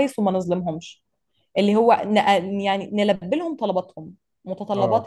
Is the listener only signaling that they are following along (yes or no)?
yes